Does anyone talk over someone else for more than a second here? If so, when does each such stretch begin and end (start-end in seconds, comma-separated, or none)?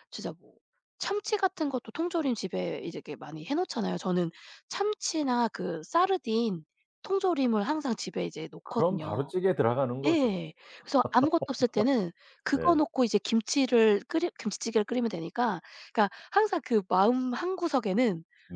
none